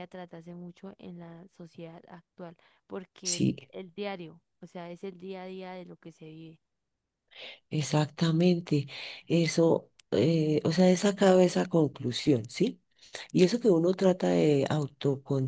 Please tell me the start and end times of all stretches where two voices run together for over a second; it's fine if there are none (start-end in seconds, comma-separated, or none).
none